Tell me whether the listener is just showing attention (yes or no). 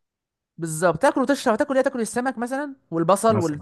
yes